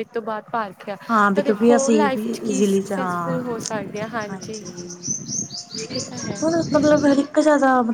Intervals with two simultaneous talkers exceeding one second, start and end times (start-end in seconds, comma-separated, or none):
1.3-3.4